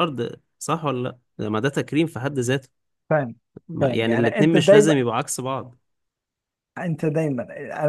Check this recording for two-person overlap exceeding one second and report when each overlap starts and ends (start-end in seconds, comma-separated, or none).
3.8-5.0